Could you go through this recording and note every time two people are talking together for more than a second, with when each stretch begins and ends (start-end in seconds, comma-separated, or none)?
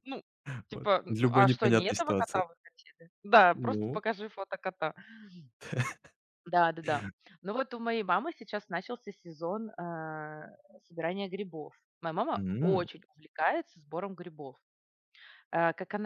0.7-2.5